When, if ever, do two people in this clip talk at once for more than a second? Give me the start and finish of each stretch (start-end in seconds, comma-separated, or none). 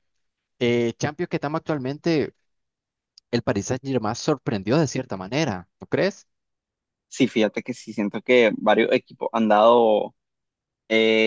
none